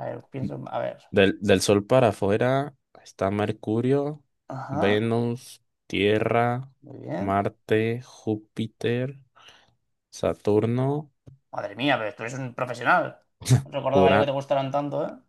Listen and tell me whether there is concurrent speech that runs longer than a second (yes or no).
no